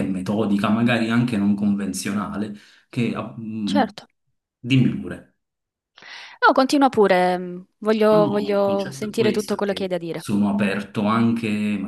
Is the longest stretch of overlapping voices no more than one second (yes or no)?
no